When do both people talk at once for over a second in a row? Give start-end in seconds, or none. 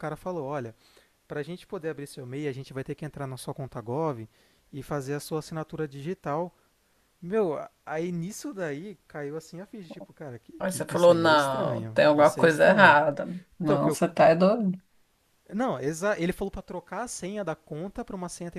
10.6-13.0